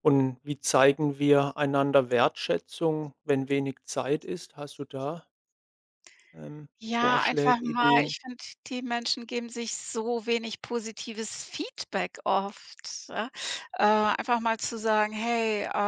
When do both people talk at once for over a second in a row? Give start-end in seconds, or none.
6.8-8.2